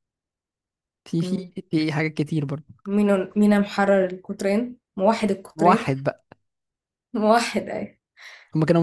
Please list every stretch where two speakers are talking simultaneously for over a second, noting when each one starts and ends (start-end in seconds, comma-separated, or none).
none